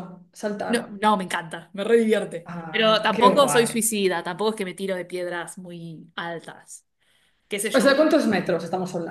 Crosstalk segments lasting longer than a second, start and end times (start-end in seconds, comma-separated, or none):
2.5-3.8